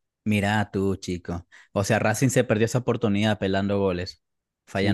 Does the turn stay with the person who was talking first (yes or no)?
no